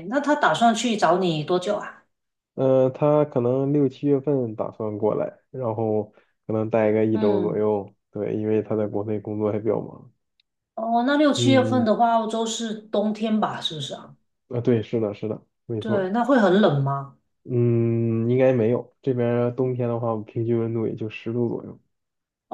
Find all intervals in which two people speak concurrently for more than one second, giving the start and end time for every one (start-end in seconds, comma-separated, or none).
none